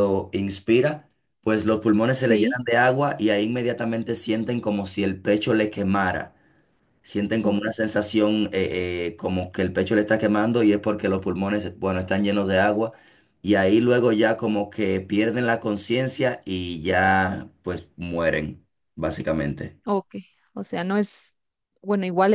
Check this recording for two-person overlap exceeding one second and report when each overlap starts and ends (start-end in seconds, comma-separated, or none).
none